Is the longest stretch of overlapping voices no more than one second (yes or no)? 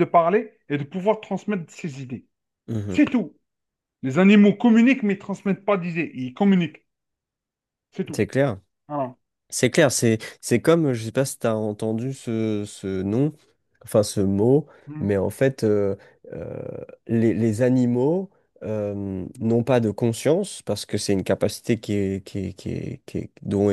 yes